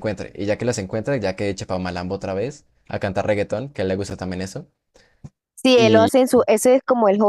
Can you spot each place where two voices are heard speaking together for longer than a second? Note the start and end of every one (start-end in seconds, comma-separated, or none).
none